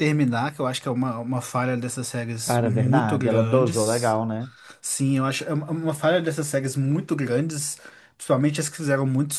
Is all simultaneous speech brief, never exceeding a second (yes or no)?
no